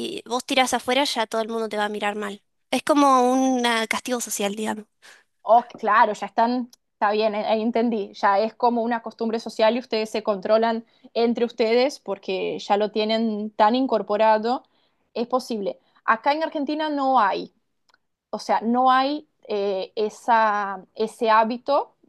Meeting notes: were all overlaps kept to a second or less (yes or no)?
yes